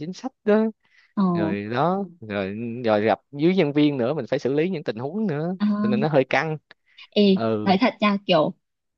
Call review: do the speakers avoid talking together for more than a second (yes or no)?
yes